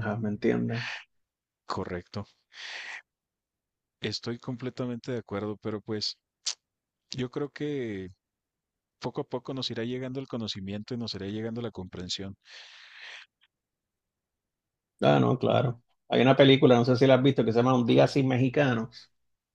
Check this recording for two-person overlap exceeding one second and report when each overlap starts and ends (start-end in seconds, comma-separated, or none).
none